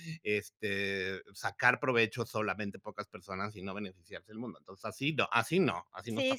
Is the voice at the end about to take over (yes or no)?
yes